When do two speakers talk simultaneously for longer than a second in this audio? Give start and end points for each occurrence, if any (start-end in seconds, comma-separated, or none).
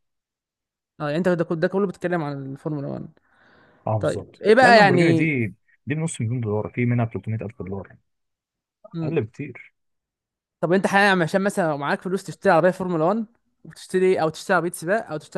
4.0-5.3